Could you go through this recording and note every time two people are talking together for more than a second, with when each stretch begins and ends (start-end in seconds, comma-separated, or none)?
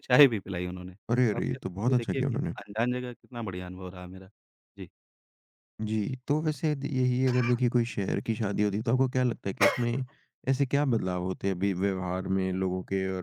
1.1-2.5